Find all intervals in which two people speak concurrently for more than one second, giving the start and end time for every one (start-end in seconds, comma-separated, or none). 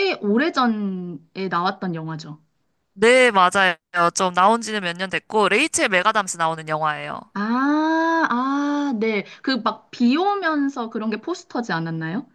none